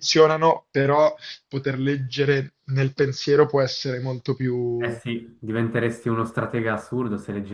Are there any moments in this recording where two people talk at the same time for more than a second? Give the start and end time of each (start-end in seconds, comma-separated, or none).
none